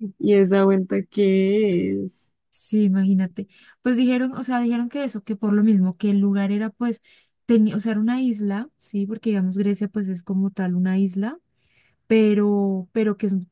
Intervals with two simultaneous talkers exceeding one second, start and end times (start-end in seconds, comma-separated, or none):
none